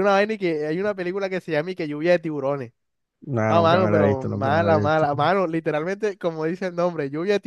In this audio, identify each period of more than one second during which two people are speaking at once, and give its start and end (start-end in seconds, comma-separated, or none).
3.5-5.1